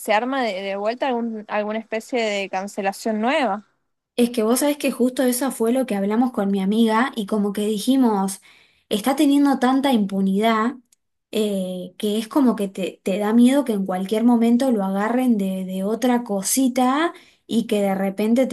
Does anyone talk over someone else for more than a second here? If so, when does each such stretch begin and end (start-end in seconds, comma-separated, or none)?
none